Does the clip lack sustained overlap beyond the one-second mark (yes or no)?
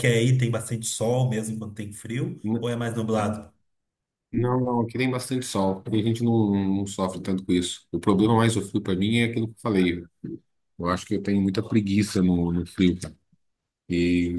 yes